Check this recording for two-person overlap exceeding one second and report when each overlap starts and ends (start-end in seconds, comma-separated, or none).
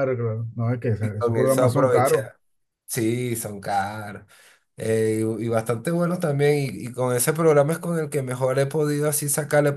1.0-2.2